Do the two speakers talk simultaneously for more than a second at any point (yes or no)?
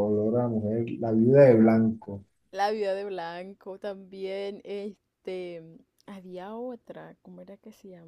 no